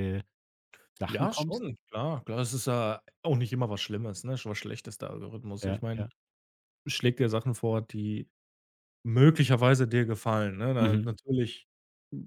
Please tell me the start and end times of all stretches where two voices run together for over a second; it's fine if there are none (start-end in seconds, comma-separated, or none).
none